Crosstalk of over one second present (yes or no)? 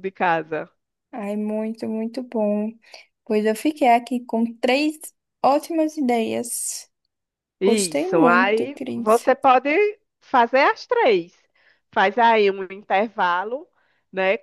yes